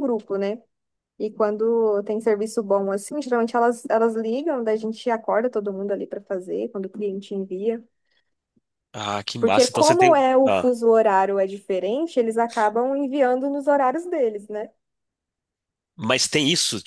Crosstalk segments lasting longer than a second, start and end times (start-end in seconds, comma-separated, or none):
9.4-10.7